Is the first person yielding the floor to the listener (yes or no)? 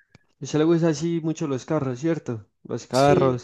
yes